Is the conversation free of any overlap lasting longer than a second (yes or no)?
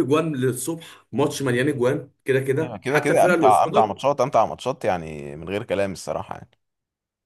no